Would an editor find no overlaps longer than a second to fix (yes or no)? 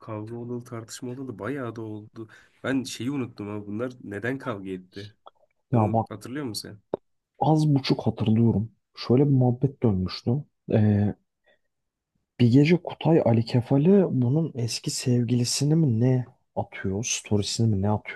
yes